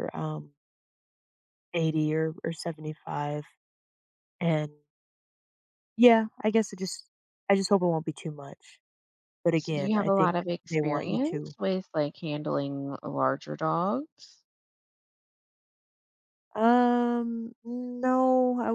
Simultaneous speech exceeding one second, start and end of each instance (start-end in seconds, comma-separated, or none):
9.5-11.6